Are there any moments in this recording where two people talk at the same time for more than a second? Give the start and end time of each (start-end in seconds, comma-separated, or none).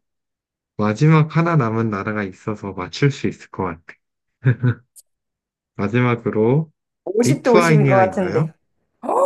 7.2-8.5